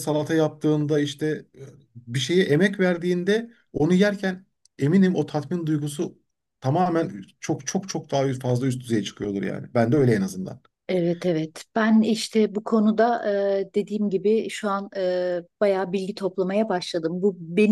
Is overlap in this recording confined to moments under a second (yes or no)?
yes